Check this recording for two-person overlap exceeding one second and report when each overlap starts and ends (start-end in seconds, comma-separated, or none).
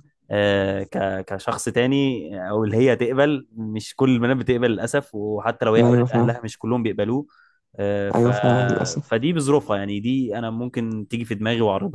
none